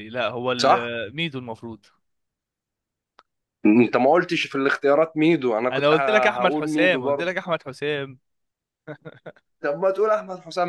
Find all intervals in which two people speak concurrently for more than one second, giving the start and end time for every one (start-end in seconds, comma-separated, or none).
5.7-7.3